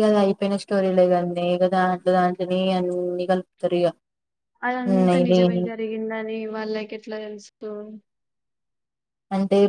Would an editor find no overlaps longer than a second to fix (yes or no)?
yes